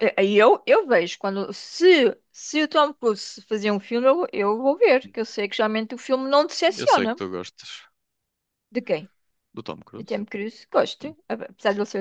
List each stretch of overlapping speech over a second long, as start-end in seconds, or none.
none